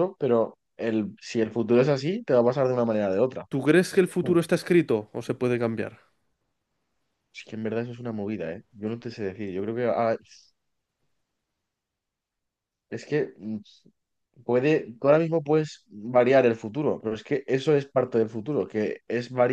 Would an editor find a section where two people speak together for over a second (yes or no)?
no